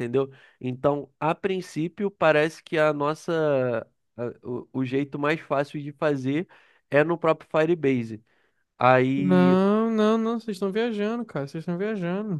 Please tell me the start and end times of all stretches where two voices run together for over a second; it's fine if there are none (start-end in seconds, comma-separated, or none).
none